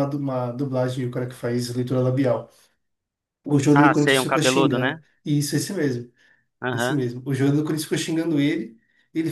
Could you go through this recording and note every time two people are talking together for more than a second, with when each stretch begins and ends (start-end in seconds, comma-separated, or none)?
3.7-5.0